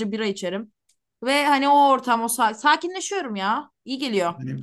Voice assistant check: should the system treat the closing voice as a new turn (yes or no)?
yes